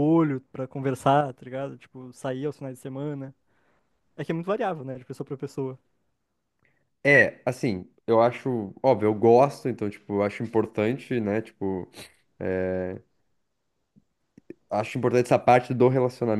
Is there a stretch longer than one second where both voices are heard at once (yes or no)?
no